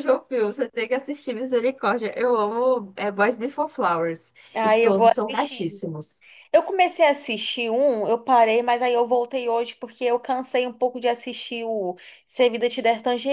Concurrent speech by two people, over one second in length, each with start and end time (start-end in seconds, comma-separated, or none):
4.5-5.8